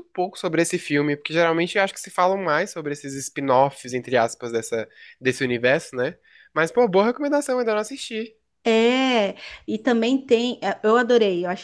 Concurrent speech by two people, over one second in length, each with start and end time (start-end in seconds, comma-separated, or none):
none